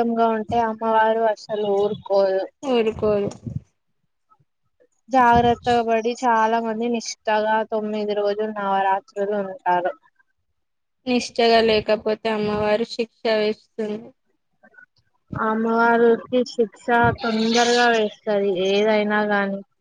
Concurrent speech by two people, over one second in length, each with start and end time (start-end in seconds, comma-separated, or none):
none